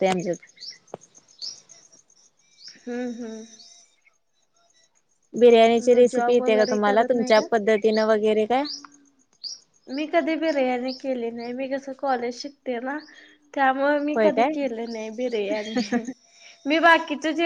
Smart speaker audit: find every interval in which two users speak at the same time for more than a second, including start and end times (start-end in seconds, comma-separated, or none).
6.0-7.5